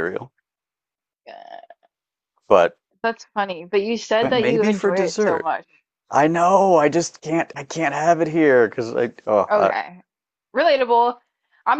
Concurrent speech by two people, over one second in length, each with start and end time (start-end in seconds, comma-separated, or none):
4.2-5.5